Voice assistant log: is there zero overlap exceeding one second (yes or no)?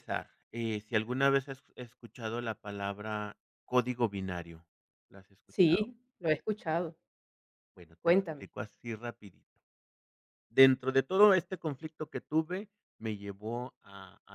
yes